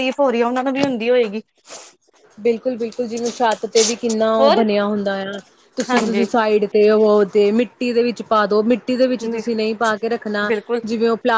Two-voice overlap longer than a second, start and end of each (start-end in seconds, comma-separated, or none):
none